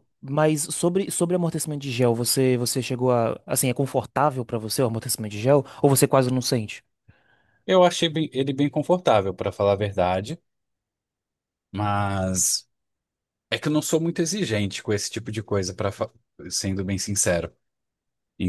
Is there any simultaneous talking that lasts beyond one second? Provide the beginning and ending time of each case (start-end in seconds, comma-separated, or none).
none